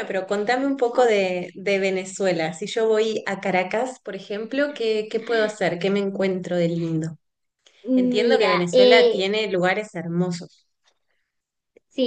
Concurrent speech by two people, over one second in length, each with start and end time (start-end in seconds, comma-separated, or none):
8.0-9.2